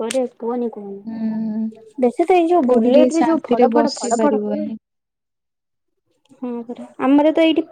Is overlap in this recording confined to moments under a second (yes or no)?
no